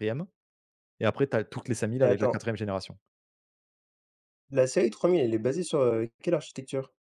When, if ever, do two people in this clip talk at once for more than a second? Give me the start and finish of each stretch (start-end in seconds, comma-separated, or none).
none